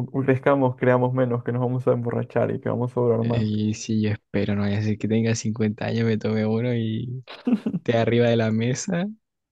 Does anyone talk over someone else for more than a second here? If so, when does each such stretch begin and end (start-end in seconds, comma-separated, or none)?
none